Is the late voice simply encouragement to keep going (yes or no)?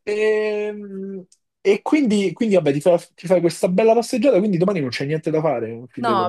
no